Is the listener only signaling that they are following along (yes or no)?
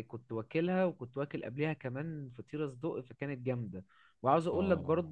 yes